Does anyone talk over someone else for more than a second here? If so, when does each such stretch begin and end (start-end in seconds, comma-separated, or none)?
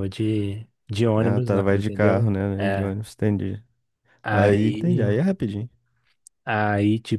1.2-3.0